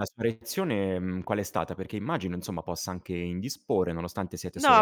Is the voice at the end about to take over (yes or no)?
yes